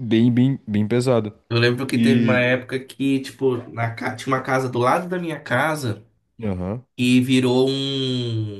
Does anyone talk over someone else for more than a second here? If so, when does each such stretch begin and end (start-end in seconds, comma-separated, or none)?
none